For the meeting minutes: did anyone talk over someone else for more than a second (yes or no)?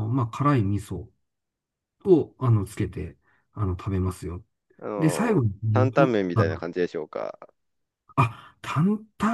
yes